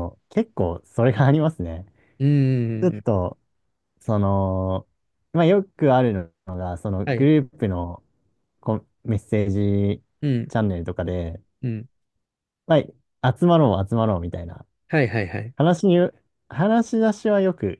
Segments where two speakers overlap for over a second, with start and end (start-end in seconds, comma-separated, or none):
none